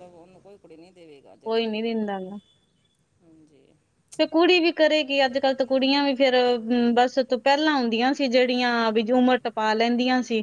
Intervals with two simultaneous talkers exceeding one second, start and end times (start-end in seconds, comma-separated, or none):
none